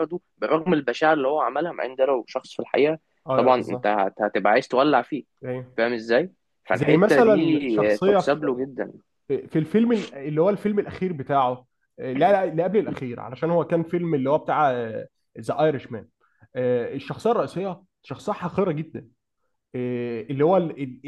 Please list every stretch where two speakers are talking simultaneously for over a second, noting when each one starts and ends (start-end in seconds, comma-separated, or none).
6.7-8.2